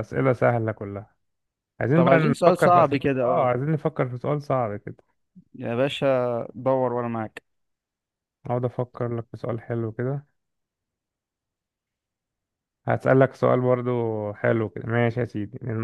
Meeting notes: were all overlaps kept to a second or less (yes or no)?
no